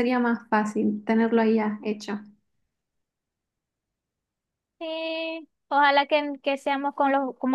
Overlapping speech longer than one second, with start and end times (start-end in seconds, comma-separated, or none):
none